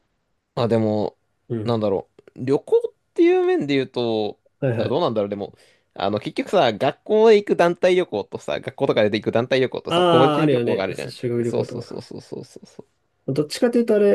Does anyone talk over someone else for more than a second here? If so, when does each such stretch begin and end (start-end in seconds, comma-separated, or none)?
9.9-12.1